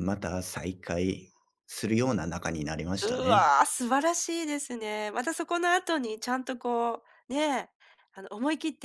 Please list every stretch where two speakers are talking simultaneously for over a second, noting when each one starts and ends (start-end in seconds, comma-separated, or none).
none